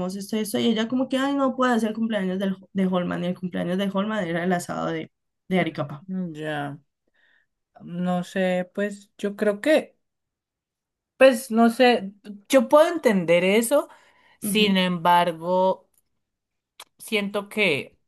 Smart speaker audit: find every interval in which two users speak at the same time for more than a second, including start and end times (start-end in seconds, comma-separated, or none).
none